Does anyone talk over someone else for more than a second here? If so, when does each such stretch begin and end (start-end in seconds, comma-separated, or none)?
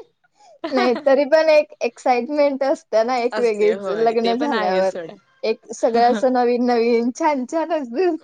3.4-5.0